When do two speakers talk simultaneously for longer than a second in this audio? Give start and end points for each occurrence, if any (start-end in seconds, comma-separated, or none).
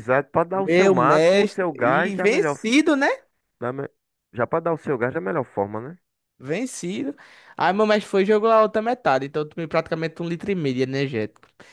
0.5-2.6